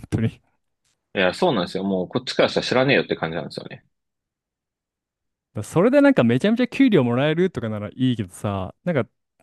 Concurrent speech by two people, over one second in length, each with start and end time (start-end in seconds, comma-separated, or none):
none